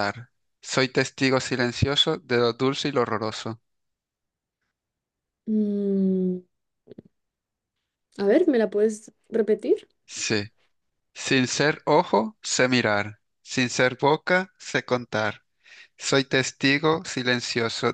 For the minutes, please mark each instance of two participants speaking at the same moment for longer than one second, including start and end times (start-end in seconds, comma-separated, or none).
none